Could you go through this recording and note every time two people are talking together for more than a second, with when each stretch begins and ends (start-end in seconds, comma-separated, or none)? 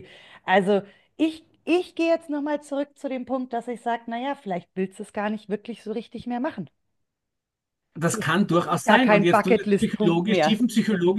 8.1-10.6